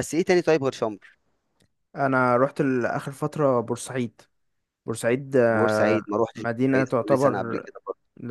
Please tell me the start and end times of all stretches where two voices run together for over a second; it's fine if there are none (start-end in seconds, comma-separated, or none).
5.5-7.7